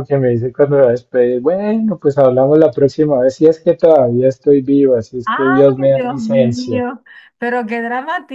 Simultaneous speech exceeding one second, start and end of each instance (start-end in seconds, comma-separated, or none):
5.2-6.8